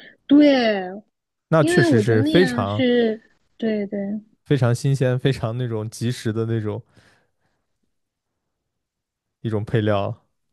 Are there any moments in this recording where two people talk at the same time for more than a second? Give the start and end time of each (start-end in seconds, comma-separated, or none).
1.6-2.8